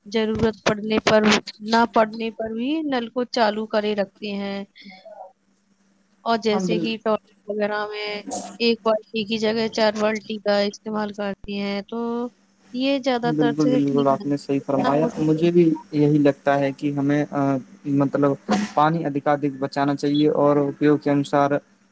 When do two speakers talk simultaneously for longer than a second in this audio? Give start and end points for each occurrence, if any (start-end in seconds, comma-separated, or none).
13.2-15.4